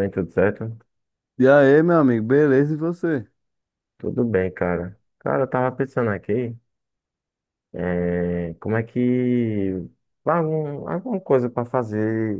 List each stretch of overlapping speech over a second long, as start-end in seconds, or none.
none